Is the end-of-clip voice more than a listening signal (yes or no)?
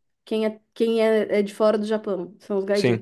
yes